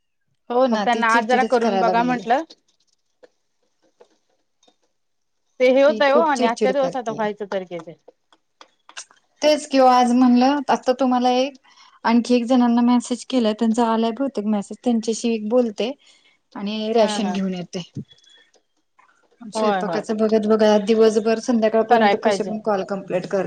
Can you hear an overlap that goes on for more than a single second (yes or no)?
yes